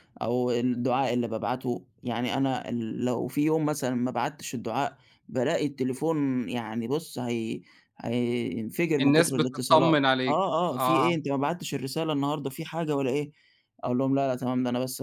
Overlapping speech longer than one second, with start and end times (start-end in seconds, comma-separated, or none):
9.0-11.1